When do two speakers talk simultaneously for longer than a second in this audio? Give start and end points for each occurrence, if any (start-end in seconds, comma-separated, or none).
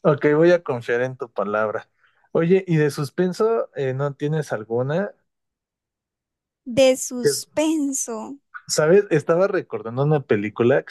none